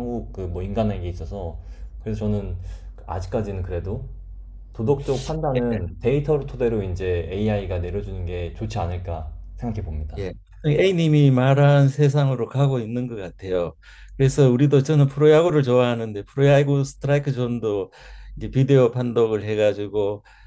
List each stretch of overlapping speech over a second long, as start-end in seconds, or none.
none